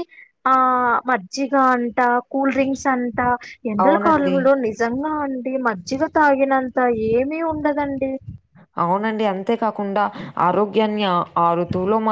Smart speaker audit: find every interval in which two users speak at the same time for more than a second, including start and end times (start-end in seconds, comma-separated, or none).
none